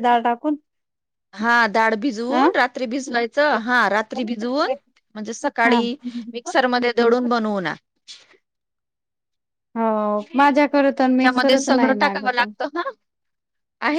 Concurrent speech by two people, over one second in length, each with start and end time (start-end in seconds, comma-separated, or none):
10.2-12.5